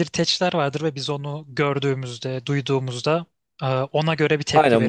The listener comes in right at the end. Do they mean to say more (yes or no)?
yes